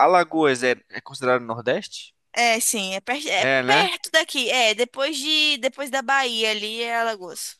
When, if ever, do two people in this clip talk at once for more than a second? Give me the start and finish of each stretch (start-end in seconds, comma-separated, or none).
none